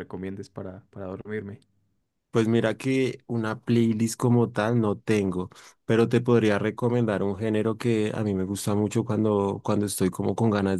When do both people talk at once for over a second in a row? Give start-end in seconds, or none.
none